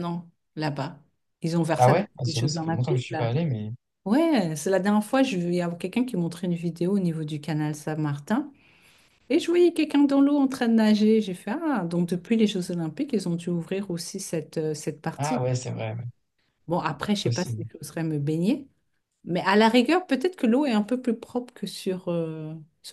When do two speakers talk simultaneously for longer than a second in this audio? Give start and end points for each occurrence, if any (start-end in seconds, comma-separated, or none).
1.8-3.3